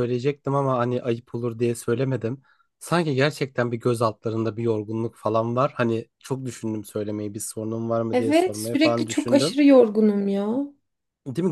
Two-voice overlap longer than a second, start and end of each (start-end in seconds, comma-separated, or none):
8.1-9.6